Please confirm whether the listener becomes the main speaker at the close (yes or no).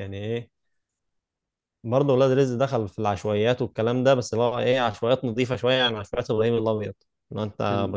no